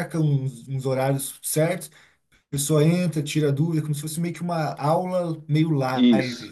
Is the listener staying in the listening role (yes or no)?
no